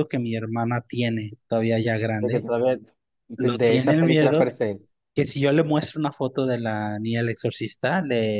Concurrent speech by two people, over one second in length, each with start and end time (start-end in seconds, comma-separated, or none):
3.4-4.5